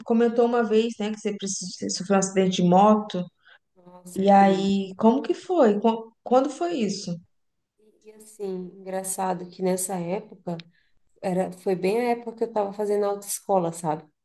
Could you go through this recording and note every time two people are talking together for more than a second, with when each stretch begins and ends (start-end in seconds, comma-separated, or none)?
none